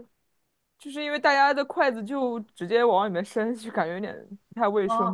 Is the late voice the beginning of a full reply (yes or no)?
yes